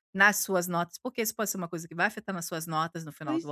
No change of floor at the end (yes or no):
no